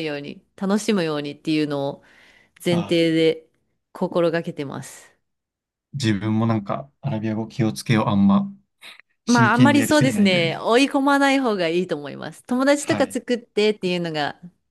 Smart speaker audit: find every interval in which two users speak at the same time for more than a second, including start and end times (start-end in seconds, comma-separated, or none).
9.2-10.6